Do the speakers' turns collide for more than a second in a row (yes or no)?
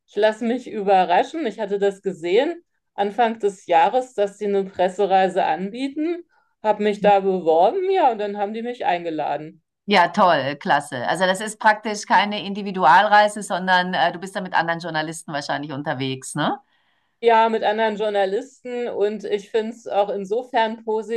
no